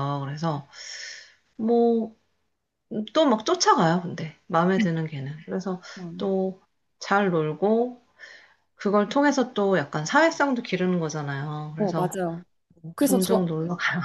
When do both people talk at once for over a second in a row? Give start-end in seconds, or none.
none